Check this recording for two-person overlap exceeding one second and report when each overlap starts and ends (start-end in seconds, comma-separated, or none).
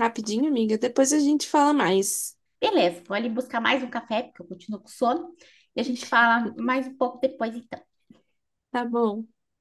none